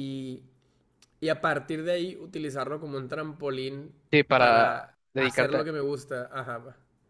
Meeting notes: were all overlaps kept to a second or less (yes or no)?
no